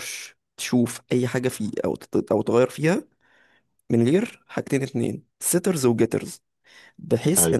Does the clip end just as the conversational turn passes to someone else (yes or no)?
no